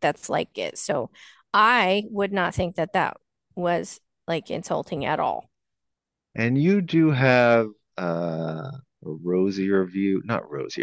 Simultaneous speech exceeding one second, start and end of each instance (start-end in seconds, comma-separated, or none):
none